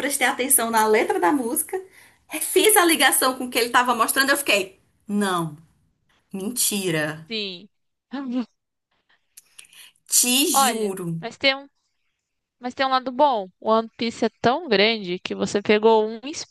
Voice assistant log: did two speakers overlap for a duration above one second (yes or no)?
no